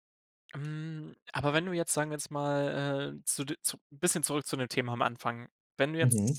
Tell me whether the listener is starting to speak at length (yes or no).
no